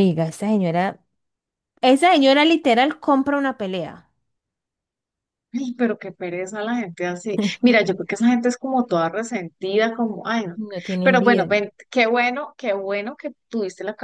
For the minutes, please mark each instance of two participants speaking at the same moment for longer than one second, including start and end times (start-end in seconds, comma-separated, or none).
none